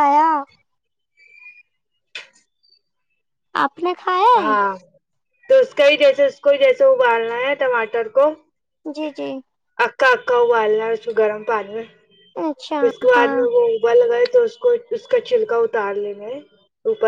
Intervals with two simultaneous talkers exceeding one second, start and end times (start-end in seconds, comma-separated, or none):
none